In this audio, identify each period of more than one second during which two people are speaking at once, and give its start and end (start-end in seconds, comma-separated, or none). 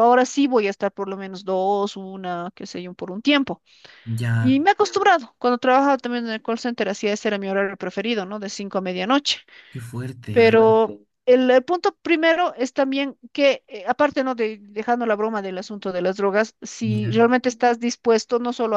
none